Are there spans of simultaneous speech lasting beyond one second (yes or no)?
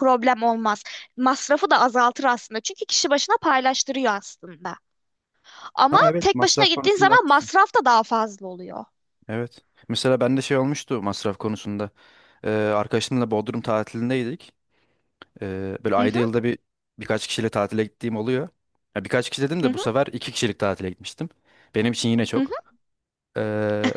yes